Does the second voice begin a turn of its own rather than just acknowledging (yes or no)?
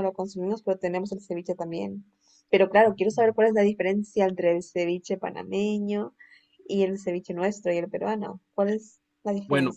yes